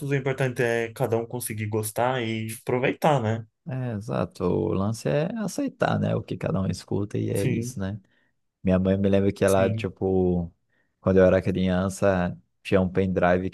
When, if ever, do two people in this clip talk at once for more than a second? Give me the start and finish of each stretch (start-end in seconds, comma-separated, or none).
none